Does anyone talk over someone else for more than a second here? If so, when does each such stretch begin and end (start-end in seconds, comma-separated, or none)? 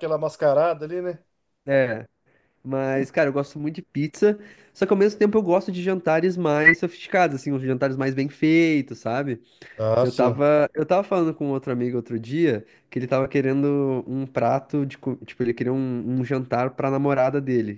none